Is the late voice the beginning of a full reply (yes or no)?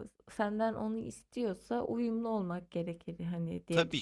yes